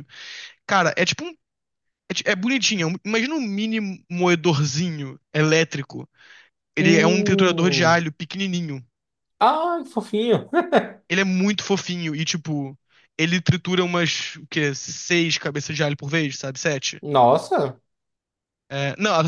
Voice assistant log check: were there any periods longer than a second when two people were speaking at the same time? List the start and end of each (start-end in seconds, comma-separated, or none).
6.8-8.0